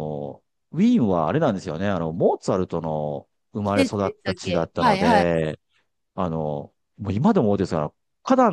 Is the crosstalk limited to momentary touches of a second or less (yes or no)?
no